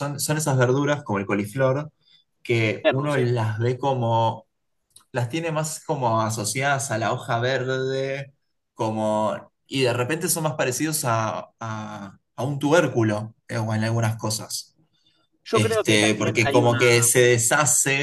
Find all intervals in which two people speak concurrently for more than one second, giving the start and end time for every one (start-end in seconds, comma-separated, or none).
15.5-16.8